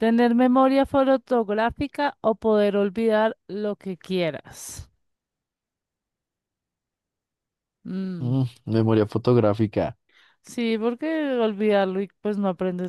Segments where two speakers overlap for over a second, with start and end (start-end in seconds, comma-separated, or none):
none